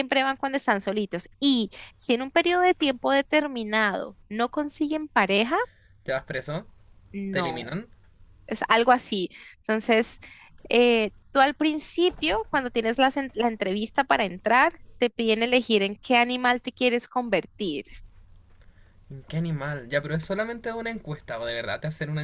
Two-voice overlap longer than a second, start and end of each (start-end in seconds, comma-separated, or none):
none